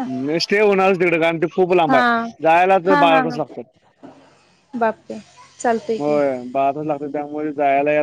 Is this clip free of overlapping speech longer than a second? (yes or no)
yes